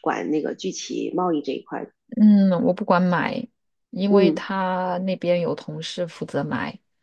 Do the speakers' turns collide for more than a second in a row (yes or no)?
no